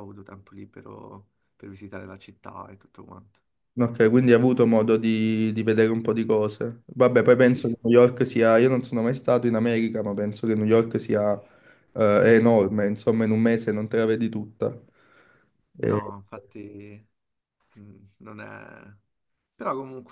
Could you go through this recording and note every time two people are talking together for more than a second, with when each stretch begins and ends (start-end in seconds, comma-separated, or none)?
none